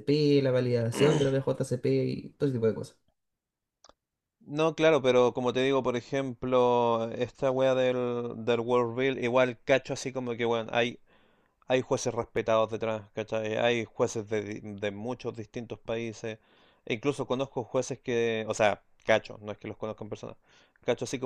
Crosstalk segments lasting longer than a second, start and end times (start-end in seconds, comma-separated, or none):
none